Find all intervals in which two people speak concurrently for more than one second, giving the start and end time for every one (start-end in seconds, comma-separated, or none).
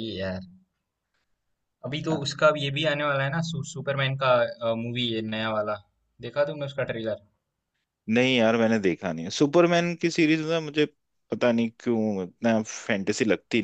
none